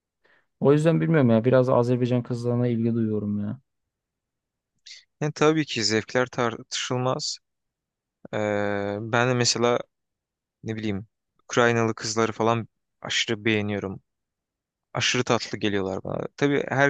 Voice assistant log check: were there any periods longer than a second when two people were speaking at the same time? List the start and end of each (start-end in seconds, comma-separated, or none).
none